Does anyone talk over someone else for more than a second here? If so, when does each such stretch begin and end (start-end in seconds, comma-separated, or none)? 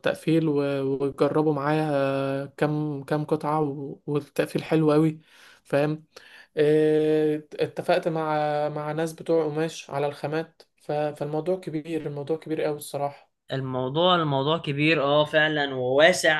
none